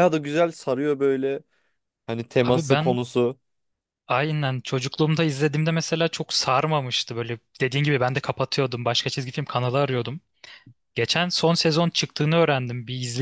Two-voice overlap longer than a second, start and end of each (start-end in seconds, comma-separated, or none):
none